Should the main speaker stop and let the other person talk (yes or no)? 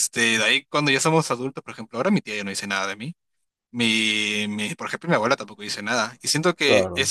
no